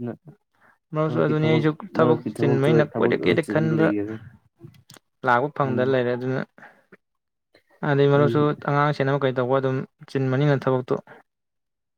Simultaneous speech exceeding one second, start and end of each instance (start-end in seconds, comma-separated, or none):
2.0-3.9